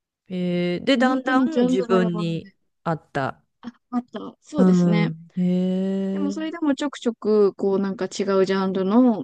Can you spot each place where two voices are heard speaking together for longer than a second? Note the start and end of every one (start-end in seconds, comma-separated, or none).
0.9-2.5